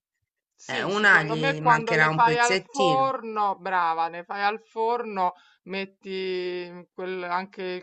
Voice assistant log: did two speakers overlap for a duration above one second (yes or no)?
yes